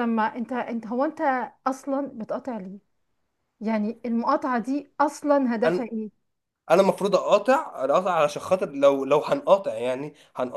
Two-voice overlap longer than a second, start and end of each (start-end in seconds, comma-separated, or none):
none